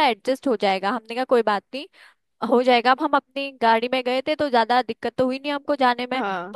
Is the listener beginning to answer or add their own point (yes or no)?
no